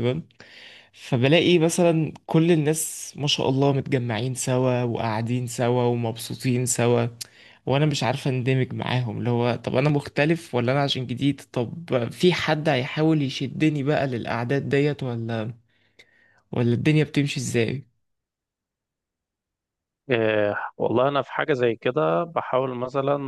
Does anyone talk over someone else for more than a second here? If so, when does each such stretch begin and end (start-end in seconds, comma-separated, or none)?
none